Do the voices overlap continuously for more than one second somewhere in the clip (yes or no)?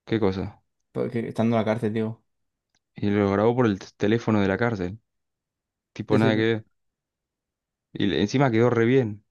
no